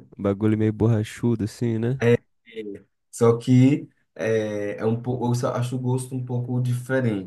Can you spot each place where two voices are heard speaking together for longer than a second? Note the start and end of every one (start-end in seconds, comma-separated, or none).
none